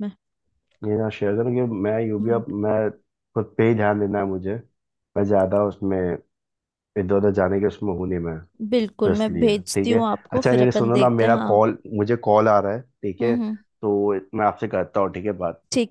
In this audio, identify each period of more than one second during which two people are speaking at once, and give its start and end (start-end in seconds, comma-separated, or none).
9.0-11.6